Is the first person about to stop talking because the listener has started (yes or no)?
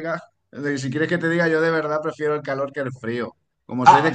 no